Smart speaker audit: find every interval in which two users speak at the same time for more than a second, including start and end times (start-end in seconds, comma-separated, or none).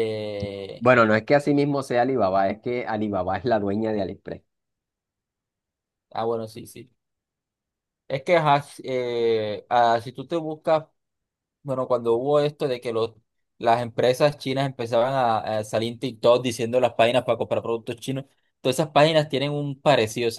none